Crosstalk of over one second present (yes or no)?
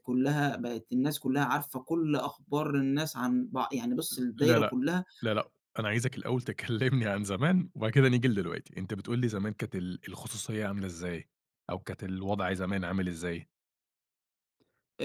no